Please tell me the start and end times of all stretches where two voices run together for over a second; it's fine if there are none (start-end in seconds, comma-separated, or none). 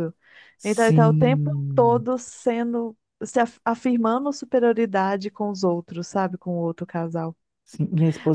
0.6-2.1